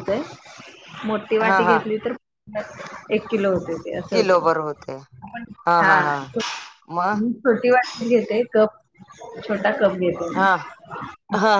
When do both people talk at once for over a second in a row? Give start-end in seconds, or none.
none